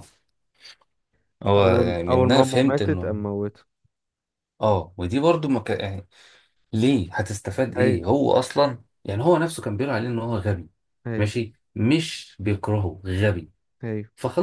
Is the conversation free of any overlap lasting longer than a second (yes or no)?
no